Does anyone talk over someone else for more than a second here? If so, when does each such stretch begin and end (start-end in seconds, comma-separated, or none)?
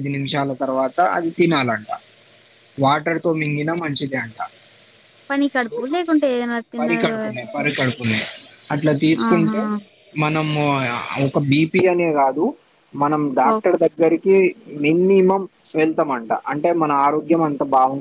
none